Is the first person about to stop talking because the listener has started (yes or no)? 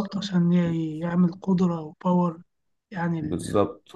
yes